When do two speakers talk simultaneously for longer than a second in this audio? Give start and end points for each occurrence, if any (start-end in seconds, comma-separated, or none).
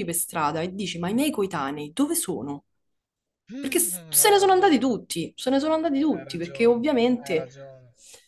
3.6-4.9, 6.1-7.5